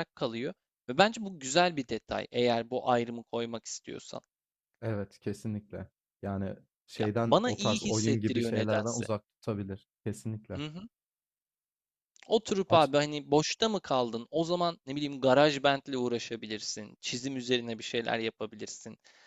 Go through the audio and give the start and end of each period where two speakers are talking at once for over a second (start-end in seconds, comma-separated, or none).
7.0-9.1